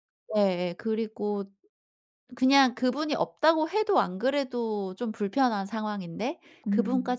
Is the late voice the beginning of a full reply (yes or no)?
no